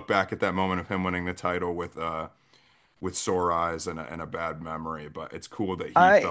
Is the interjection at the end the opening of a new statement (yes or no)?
no